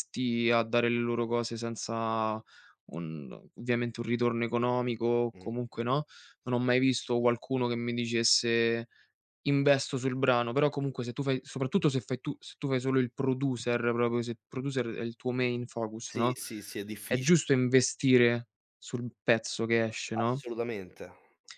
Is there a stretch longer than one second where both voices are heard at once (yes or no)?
no